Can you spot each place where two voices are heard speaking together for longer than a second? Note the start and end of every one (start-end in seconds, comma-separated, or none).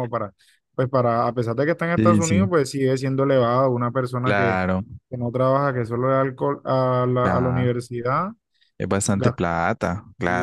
none